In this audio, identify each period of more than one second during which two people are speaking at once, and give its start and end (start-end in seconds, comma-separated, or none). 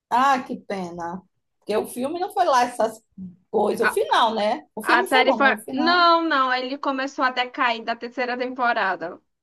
4.8-6.0